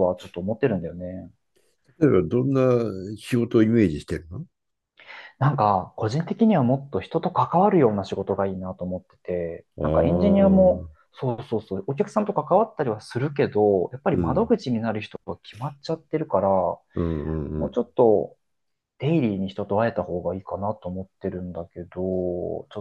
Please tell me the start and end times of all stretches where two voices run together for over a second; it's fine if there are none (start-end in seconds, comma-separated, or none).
9.8-11.1